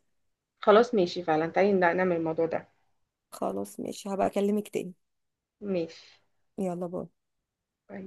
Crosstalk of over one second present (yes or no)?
no